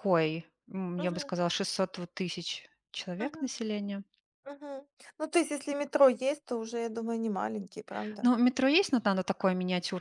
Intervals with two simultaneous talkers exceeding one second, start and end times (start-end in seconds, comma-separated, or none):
none